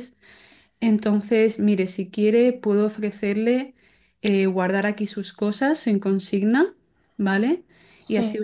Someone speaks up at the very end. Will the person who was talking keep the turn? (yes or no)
yes